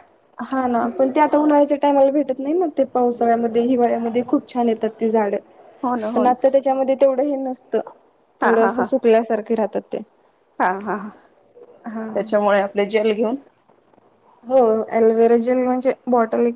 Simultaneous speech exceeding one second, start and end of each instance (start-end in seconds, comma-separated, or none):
none